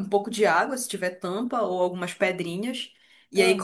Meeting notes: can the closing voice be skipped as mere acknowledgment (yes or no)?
yes